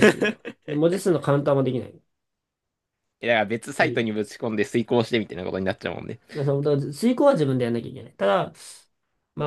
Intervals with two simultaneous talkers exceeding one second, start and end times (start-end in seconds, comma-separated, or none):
none